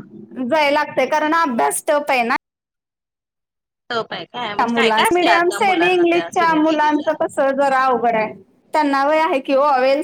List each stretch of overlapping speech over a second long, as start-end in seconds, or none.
4.7-7.1